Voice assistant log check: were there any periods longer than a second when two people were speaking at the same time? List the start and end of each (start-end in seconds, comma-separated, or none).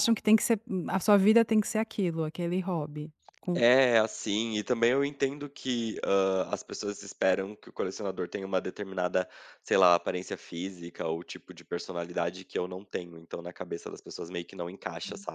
none